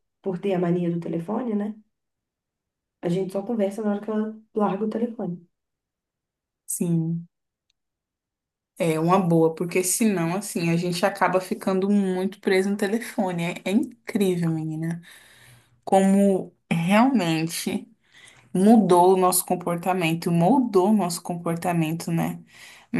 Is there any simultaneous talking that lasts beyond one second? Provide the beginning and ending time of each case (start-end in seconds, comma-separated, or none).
none